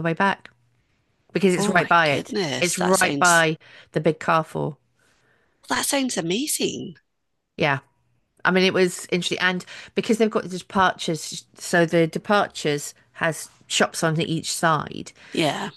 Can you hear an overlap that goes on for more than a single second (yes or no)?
yes